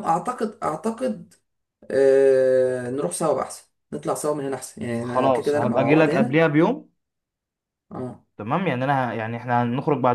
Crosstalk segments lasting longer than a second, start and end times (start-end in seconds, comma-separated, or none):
5.0-6.4